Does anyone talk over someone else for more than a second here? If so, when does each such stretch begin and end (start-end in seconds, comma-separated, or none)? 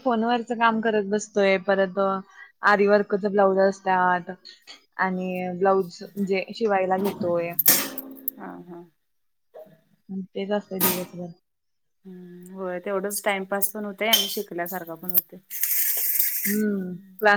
none